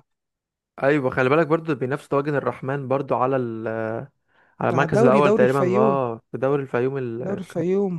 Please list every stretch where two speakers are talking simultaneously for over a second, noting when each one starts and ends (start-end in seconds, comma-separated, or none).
4.7-6.0